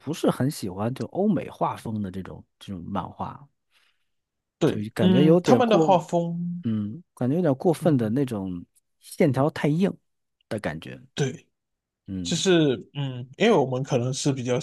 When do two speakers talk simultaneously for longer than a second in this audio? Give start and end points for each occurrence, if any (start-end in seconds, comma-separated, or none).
4.6-6.0